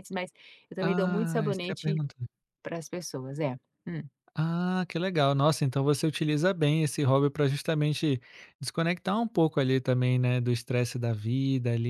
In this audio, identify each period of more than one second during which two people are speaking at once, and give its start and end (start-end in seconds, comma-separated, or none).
0.8-2.0